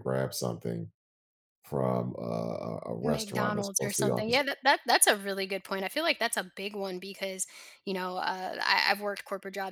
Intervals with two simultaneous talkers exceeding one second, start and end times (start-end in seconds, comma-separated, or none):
3.0-4.4